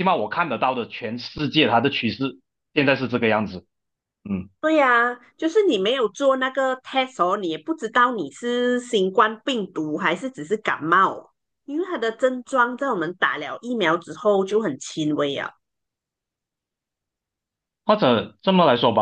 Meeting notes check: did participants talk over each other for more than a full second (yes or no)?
no